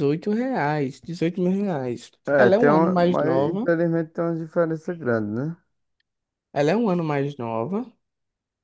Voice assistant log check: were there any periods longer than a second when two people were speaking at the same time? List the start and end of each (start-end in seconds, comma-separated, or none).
2.3-3.7